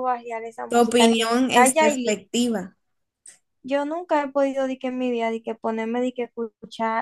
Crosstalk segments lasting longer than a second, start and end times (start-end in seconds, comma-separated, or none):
0.7-2.1